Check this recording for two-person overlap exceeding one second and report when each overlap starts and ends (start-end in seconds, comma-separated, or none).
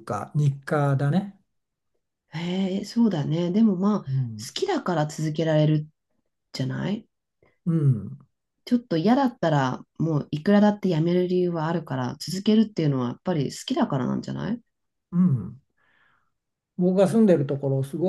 none